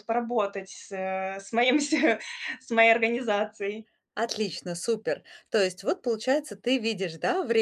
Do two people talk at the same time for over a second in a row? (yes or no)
no